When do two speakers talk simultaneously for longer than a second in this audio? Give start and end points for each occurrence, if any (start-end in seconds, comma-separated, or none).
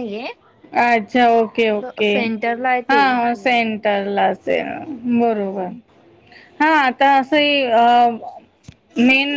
none